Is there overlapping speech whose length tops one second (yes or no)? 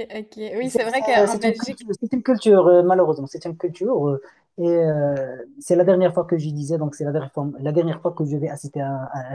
yes